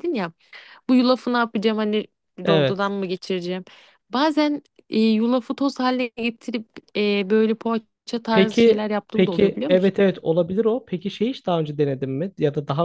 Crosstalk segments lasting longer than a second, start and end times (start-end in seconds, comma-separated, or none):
8.3-9.9